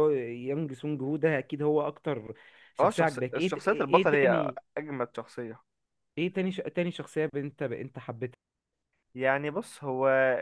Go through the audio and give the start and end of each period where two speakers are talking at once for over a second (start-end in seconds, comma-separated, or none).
2.8-4.6